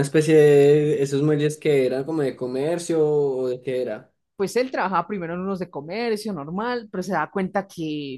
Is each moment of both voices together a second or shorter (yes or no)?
yes